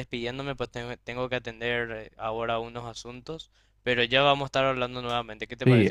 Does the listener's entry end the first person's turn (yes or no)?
yes